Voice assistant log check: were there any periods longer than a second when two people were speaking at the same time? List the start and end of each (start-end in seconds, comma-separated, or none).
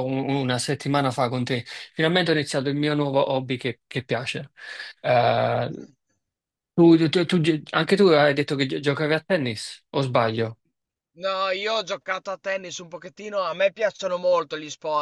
none